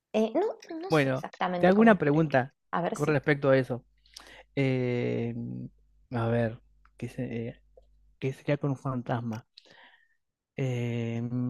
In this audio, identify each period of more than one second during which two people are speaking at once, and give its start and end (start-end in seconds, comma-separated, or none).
0.9-2.3